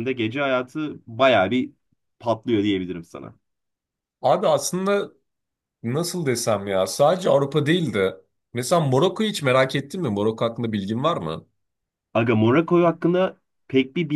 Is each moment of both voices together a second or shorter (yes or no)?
yes